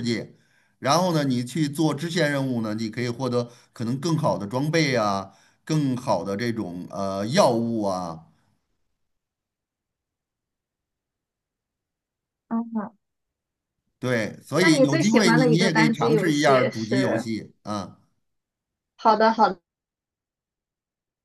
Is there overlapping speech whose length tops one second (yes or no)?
yes